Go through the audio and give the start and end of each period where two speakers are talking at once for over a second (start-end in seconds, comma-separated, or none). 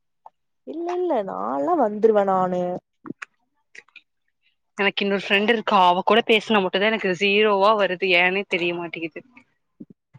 none